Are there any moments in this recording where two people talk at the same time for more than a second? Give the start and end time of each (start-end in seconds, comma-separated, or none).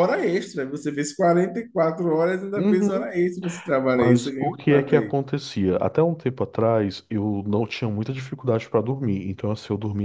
3.9-5.2